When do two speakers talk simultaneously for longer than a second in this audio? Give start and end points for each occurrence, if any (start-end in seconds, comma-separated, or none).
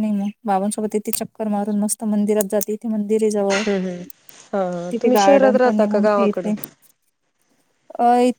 4.9-6.5